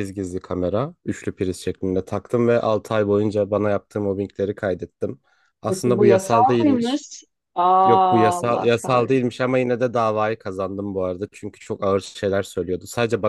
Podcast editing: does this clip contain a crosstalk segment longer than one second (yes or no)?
yes